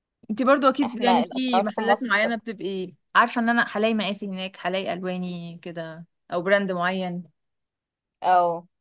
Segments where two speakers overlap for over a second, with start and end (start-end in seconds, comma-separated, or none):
0.8-2.3